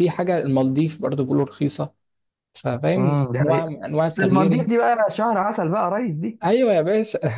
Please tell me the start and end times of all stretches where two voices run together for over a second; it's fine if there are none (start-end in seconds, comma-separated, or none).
3.0-4.7